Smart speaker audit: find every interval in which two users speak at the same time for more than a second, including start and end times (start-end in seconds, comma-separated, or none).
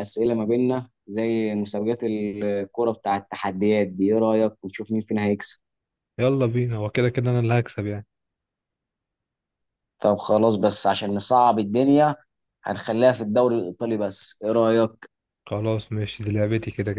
none